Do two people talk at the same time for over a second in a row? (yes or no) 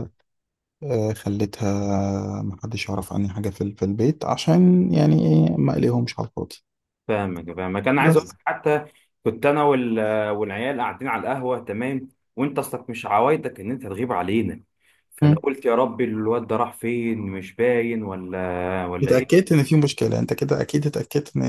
no